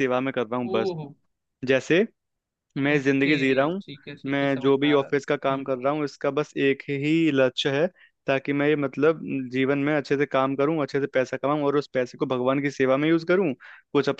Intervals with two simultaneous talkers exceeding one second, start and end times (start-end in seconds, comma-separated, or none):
4.3-5.7